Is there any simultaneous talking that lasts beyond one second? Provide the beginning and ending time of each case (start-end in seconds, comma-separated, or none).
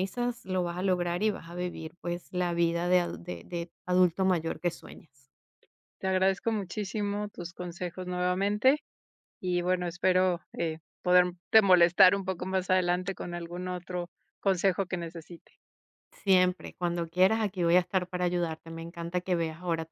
none